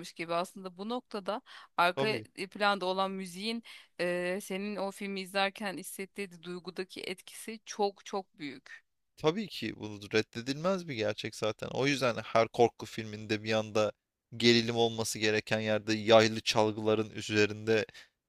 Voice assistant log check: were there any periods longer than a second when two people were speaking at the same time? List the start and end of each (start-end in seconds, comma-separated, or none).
none